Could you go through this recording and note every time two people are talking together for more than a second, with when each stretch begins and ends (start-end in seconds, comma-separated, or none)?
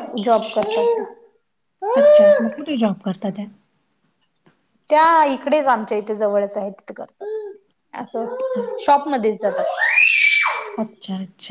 none